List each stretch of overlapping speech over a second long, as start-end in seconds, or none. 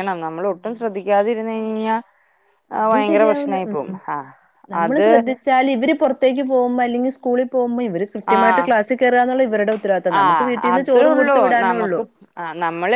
10.2-12.0